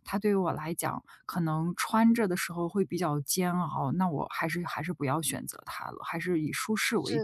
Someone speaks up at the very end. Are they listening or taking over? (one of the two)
taking over